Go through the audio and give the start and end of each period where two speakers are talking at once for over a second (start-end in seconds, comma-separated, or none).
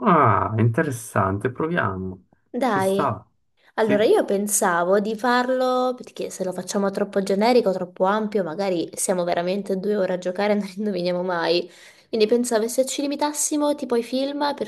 none